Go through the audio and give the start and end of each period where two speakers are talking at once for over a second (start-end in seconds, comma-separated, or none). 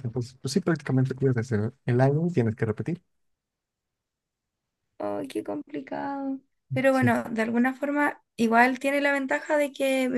none